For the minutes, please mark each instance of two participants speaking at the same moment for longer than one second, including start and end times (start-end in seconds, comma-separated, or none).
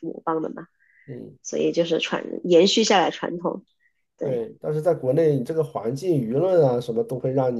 none